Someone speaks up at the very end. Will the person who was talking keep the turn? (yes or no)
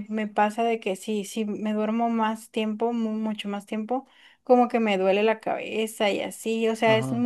yes